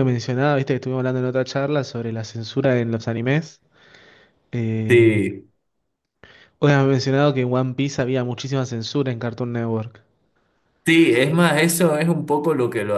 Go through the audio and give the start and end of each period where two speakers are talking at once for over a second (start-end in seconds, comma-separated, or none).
none